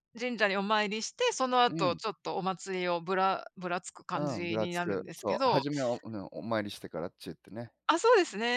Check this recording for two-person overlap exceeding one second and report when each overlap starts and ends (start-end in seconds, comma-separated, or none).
4.1-5.7